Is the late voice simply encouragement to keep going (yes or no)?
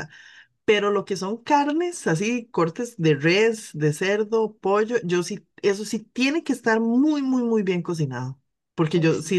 yes